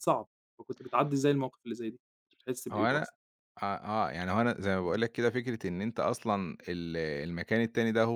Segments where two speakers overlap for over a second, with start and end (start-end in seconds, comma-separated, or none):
none